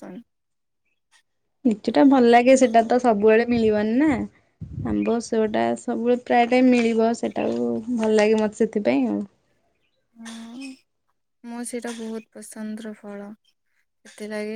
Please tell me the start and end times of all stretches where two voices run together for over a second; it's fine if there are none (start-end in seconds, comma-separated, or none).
none